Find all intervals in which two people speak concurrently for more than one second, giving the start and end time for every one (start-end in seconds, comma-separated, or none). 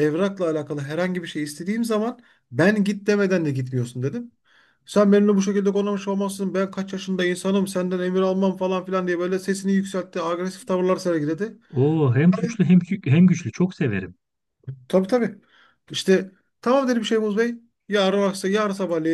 none